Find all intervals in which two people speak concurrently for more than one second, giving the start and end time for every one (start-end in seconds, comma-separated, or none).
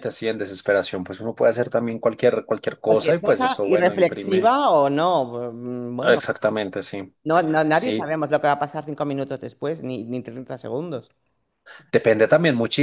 2.9-4.5